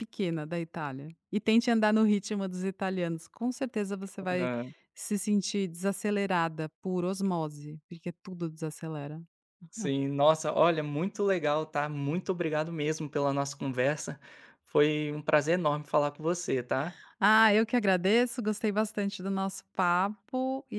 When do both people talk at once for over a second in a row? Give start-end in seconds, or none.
none